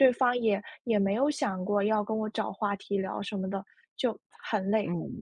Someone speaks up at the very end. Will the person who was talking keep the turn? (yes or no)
no